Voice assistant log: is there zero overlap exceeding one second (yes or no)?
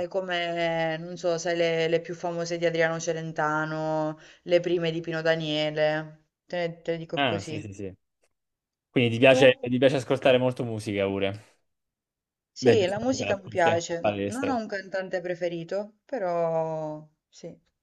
no